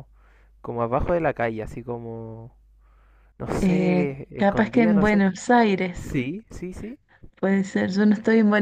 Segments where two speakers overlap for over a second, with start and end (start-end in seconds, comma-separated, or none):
3.6-5.3